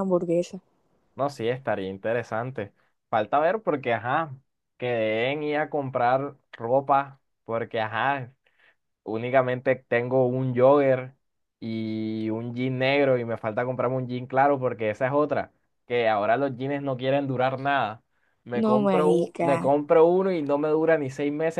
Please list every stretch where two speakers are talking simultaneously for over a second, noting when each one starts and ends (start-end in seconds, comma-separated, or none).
18.5-19.7